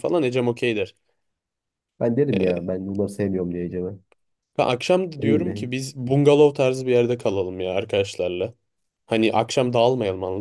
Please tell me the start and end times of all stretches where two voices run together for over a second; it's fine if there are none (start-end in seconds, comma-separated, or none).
none